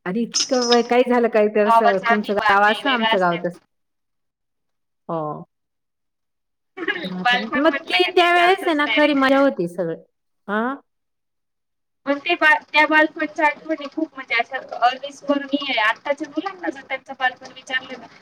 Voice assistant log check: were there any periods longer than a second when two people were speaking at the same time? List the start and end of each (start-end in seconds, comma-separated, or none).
1.6-3.5, 7.2-9.2